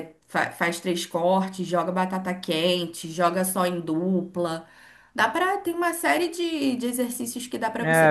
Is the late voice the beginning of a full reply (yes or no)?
yes